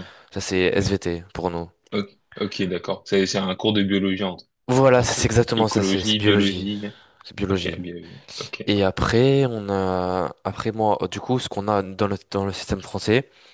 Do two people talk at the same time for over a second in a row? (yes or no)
yes